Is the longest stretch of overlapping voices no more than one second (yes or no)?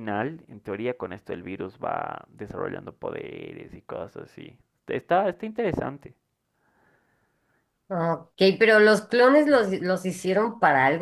yes